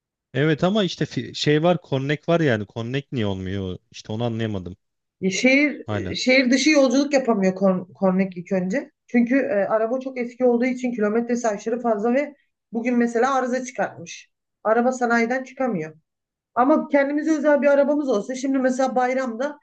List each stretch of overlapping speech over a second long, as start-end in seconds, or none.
none